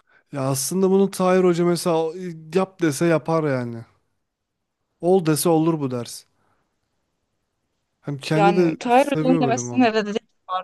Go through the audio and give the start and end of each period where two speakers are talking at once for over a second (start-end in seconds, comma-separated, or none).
8.3-9.9